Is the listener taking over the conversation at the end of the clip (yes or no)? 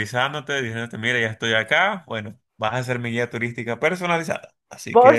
yes